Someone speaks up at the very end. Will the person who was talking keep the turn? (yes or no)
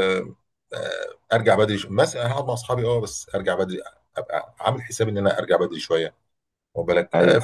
yes